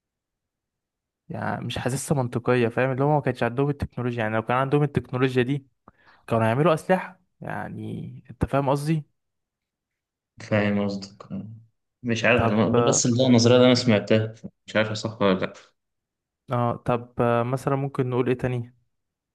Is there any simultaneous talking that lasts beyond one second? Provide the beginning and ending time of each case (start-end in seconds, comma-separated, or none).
none